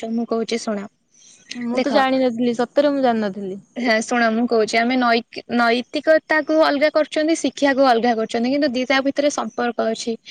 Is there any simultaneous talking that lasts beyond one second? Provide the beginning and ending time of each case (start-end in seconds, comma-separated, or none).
none